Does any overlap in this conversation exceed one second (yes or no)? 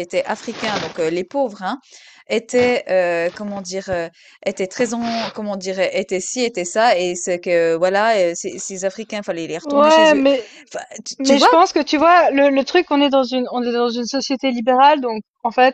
no